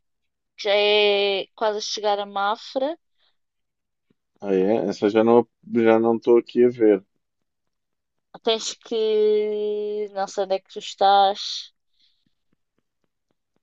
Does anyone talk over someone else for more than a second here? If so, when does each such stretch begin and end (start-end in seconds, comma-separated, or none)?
none